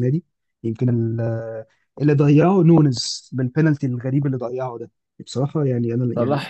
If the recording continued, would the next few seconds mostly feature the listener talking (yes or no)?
yes